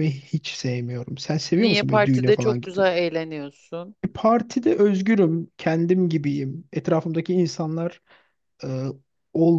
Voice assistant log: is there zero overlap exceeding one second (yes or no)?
no